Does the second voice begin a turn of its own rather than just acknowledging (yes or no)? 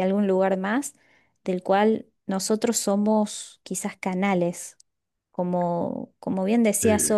no